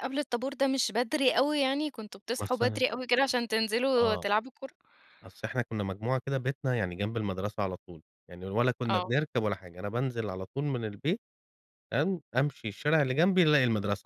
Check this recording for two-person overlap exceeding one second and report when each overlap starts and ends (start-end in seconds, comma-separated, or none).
none